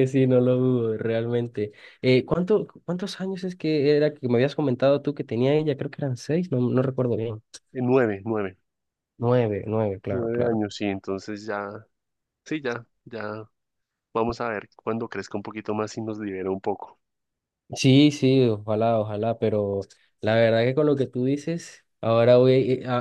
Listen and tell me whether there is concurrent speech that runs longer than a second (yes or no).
no